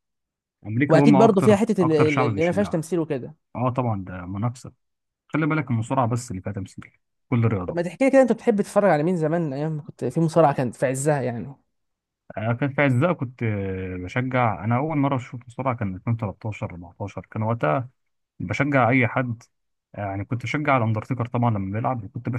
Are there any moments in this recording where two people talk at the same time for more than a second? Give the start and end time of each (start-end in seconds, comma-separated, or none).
0.9-2.9